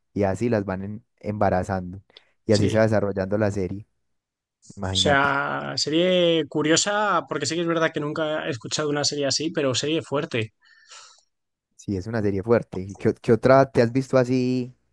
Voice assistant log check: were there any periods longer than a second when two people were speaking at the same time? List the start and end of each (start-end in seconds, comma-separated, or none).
none